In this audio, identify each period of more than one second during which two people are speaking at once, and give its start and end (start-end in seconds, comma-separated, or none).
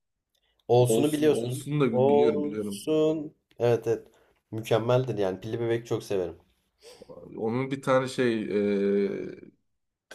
0.8-2.9